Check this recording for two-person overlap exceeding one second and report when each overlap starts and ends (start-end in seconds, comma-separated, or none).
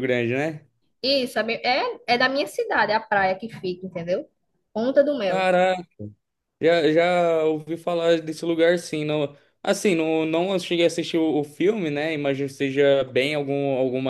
none